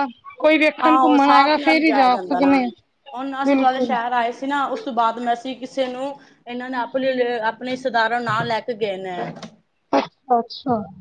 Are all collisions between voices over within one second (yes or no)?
no